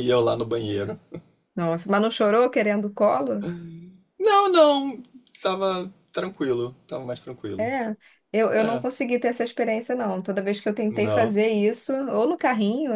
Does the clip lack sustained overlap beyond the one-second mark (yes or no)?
yes